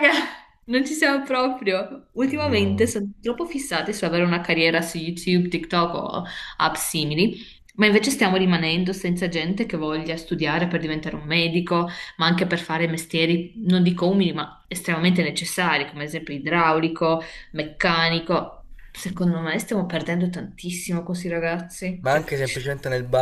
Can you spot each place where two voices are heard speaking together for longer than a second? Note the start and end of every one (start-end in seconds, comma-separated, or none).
none